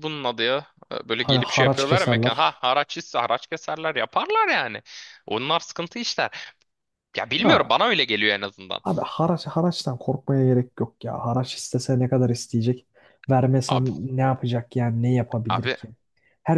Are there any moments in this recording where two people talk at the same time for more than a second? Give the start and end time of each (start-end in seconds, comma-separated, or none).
1.2-2.5